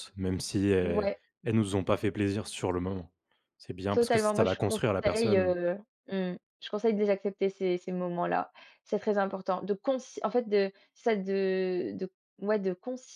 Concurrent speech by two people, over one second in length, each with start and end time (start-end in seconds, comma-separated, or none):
3.9-5.6